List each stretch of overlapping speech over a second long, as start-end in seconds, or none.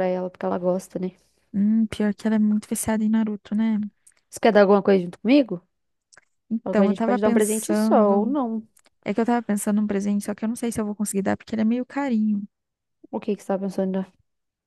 6.6-8.3